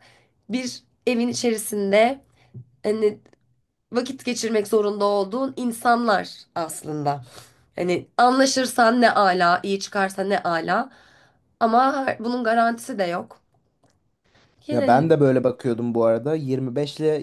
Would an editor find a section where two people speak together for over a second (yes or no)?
no